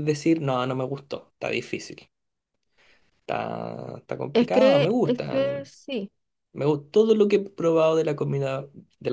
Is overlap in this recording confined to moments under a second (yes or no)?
no